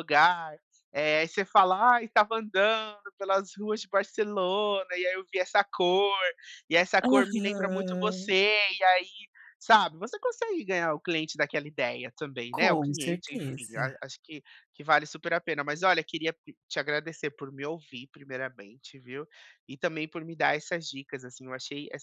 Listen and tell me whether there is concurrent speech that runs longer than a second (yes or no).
yes